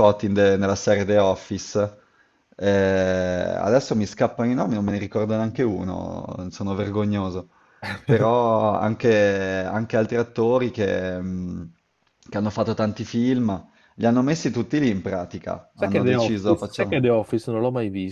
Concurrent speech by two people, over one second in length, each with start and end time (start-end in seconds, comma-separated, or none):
15.7-17.0